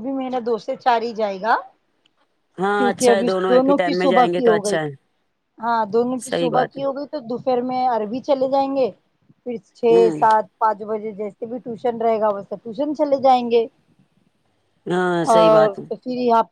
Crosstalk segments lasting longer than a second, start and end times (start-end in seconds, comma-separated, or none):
2.8-4.8